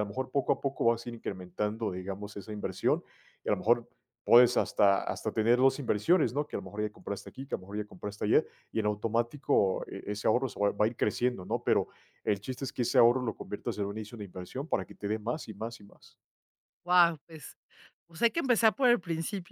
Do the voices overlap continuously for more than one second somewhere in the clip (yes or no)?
no